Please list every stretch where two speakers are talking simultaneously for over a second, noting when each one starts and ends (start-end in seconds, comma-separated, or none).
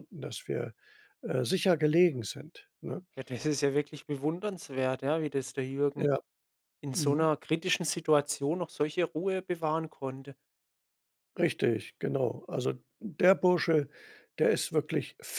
none